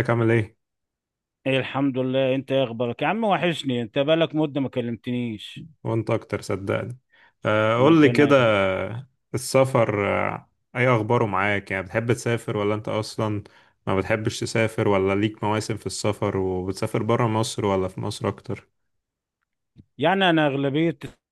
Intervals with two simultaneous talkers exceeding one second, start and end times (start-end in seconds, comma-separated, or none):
none